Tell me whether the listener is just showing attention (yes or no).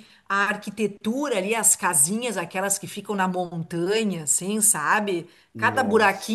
yes